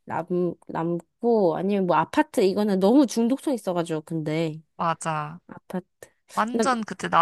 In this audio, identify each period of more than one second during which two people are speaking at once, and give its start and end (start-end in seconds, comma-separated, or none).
none